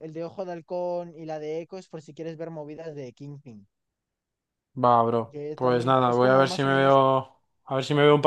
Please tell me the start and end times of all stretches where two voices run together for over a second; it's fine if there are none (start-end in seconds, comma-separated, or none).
5.3-7.0